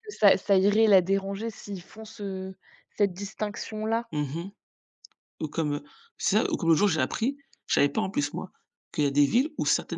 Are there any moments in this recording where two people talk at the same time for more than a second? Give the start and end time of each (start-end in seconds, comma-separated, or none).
none